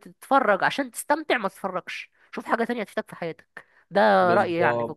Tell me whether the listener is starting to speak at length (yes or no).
yes